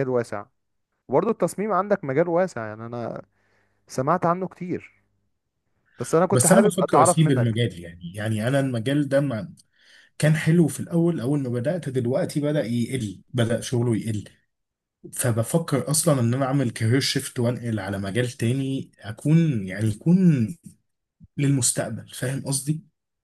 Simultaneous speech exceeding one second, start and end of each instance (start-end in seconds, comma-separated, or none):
6.3-7.6